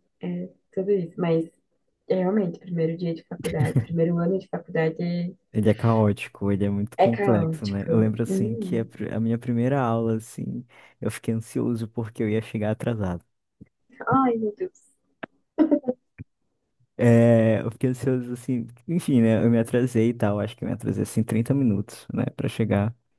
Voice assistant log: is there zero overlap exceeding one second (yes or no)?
no